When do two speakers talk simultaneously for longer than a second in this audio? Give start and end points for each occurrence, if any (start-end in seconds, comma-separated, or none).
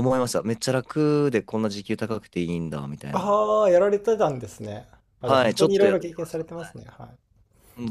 5.2-6.8